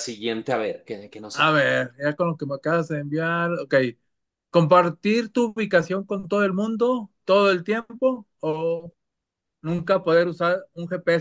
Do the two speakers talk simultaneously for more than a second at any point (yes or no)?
no